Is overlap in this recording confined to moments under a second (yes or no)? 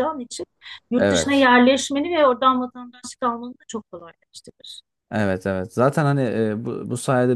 yes